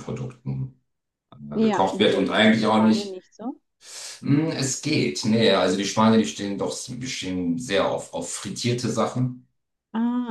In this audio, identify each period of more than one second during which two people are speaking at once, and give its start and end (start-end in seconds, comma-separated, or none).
1.5-3.2